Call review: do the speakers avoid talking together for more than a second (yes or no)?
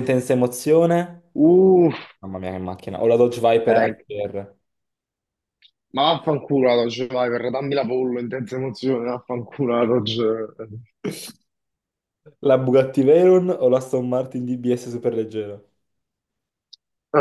yes